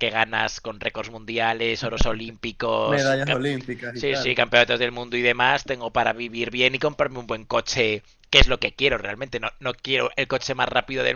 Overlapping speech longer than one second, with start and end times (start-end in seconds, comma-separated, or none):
none